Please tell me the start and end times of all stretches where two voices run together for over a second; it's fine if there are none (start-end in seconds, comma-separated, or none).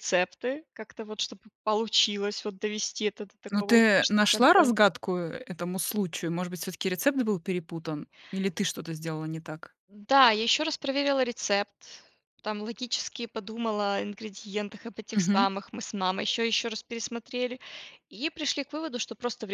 3.5-4.7